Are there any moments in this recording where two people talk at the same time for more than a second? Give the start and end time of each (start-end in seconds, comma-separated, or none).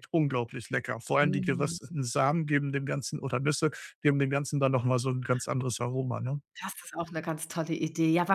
none